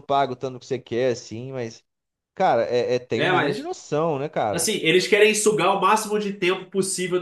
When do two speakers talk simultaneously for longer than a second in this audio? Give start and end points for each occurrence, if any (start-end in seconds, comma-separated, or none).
none